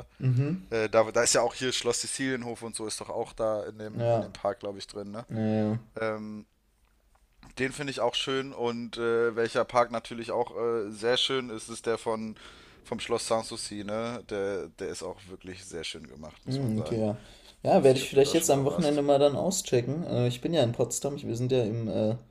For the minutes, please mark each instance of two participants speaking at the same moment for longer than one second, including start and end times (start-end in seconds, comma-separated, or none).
17.7-19.0